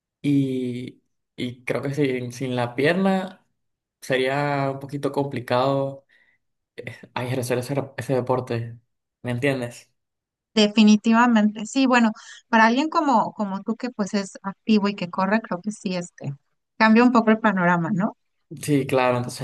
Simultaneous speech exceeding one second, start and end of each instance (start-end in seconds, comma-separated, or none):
none